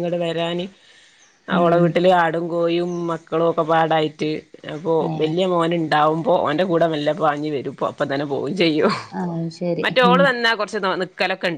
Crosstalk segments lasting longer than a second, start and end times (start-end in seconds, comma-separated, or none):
none